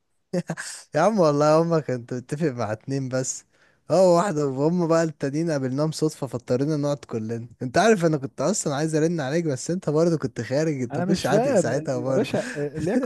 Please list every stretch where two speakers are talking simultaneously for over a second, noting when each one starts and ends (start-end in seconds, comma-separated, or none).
10.9-12.3